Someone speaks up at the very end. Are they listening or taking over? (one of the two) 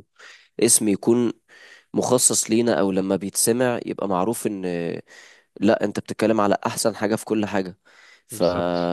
listening